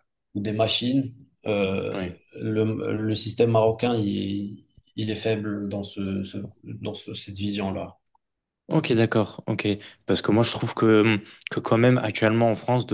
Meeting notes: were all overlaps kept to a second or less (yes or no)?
yes